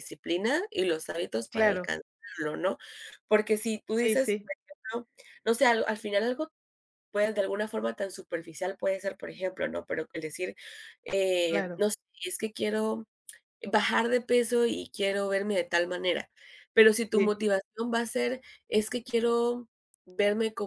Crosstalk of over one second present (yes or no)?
no